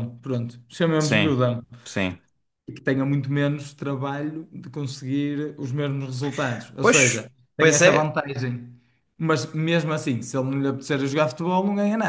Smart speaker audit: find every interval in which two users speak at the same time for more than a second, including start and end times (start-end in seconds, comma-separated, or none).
6.8-8.2